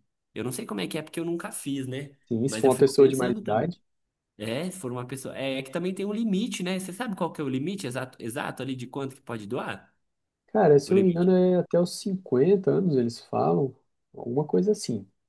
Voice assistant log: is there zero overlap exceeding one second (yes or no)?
no